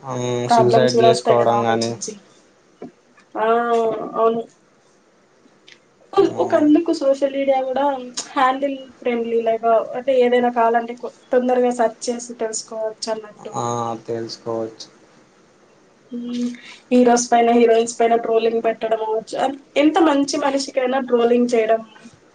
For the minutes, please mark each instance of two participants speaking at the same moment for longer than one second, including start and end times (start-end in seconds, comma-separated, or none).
0.5-1.9